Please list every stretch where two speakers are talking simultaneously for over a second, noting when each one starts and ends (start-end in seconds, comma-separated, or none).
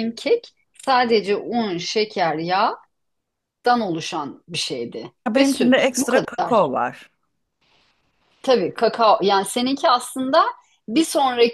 5.3-6.7